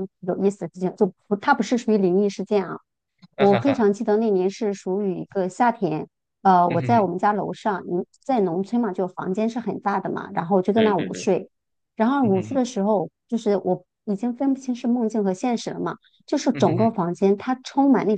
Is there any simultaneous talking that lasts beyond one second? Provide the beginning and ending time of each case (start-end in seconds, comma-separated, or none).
none